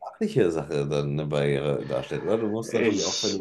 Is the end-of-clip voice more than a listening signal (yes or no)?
no